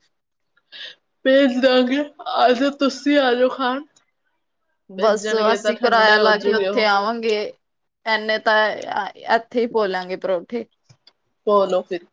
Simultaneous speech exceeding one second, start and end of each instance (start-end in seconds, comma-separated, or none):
5.0-6.8